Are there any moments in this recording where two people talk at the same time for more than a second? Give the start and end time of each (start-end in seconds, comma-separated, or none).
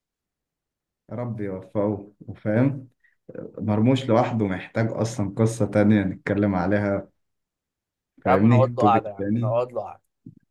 8.3-9.6